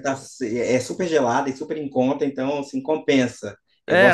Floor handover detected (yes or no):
yes